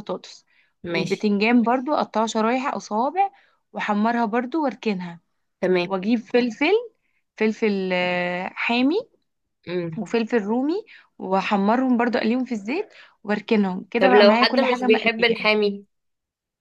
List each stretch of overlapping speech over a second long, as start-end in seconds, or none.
14.0-15.5